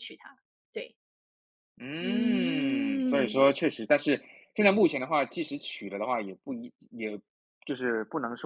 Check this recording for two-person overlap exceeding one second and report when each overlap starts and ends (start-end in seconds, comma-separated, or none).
2.0-3.5